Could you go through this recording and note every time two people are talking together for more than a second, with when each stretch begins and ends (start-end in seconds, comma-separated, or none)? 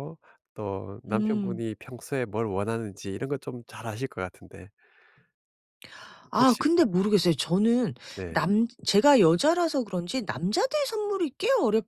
none